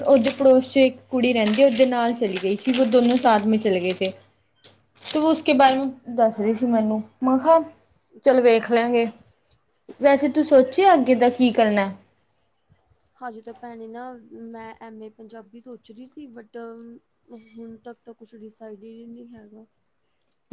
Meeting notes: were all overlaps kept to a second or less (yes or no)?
yes